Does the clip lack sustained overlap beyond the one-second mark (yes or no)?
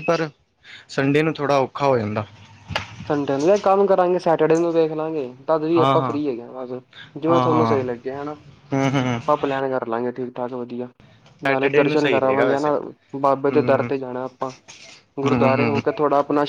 no